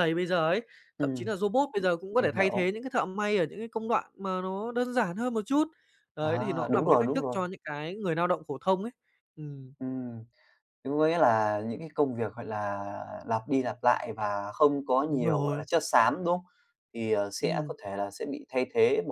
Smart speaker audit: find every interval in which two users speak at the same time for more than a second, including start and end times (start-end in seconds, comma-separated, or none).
6.2-7.4